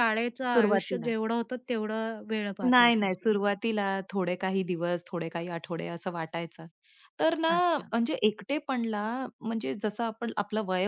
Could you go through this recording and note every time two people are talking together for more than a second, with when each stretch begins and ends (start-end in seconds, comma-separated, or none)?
none